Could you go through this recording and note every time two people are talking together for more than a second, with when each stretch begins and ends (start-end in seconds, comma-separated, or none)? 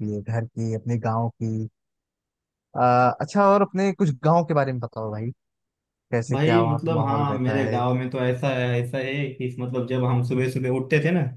6.3-7.8